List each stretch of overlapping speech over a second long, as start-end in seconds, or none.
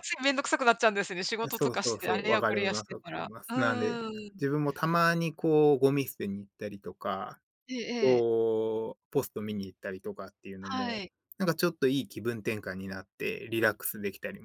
1.4-4.0